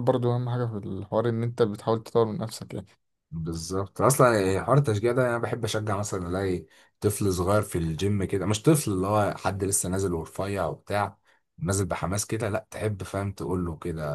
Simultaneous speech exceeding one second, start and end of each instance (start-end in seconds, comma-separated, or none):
none